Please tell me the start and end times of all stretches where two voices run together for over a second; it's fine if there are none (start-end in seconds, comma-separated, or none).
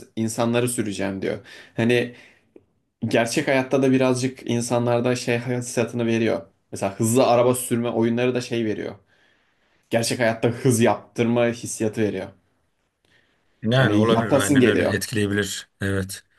13.7-14.9